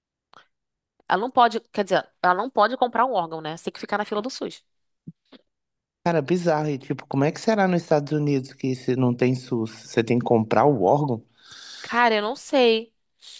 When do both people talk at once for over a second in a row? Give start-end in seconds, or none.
none